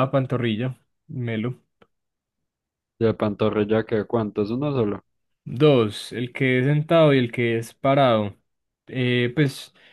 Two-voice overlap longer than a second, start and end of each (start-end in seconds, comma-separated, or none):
none